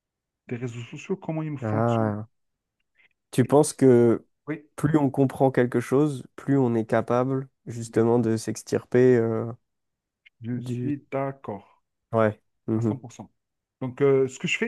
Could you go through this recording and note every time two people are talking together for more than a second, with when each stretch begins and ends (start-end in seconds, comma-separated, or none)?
none